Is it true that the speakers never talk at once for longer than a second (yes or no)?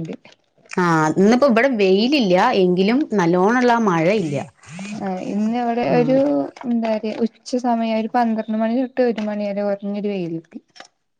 yes